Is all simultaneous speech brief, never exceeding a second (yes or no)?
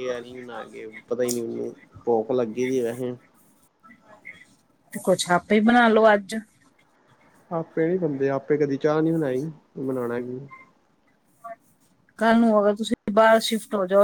yes